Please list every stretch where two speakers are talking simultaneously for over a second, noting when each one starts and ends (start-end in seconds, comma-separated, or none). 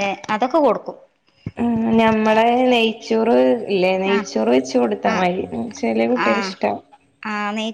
none